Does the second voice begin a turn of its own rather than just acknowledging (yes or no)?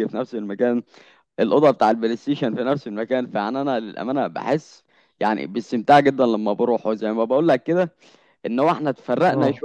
no